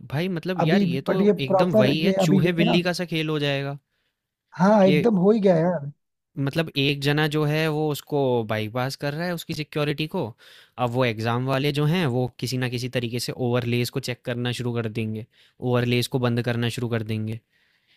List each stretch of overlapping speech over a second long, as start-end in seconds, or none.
0.6-2.8